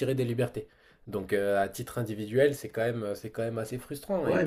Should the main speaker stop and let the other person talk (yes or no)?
yes